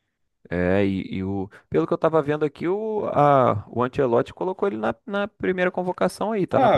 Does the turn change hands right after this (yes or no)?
yes